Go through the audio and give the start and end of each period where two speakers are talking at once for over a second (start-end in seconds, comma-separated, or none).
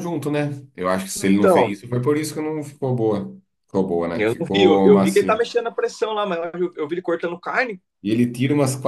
4.2-5.5